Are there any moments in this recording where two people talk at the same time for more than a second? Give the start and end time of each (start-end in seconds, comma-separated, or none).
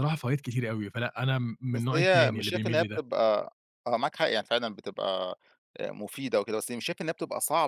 1.7-3.0